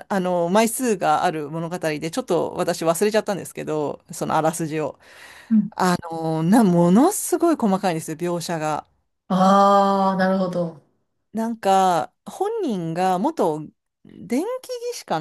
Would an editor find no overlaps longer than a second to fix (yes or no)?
yes